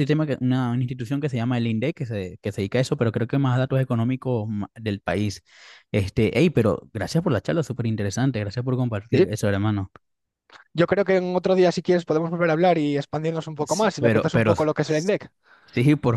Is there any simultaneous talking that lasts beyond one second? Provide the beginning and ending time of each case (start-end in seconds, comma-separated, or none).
13.6-15.1